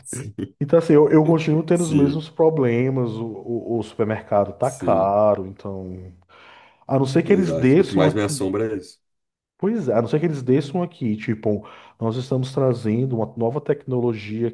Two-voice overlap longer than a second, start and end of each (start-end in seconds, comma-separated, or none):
7.3-8.5